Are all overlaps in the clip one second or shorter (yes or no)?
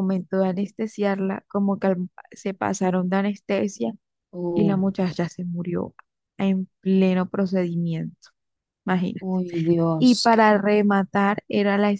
yes